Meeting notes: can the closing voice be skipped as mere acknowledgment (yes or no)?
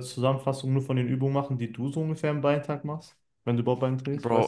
no